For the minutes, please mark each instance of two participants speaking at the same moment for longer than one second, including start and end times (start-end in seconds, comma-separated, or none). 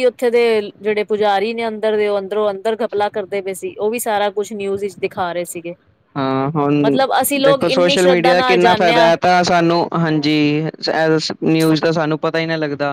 7.5-9.1